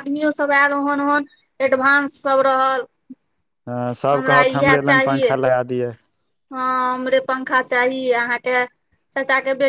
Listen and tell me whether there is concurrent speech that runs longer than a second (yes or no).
no